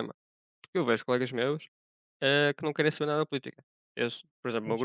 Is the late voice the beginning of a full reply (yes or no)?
no